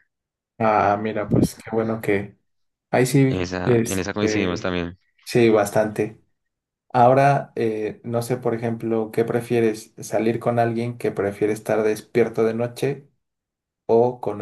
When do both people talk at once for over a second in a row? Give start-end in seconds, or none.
3.3-4.8